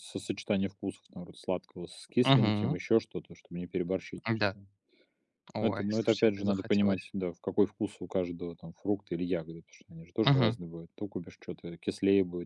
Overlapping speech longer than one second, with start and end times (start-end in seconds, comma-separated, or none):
5.6-7.1